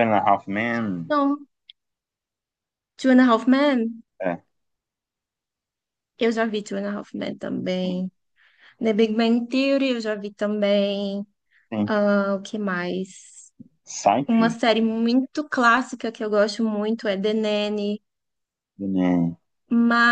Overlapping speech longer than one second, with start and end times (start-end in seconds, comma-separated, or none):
none